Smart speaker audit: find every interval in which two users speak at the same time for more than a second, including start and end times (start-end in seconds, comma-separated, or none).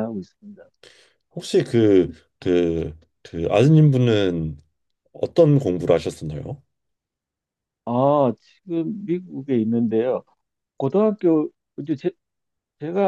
none